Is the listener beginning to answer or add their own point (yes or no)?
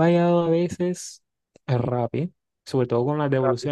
no